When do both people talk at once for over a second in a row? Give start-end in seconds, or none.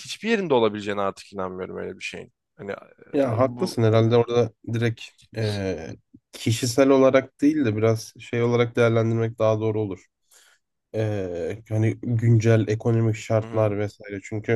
none